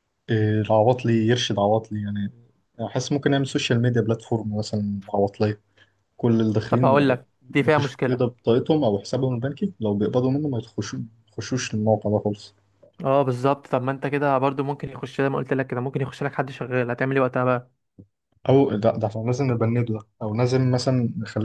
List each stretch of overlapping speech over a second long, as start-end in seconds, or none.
6.7-8.3